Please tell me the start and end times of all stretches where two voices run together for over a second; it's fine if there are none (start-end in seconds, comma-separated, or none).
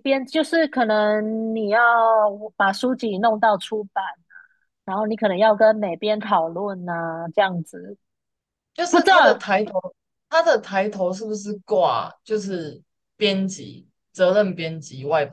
none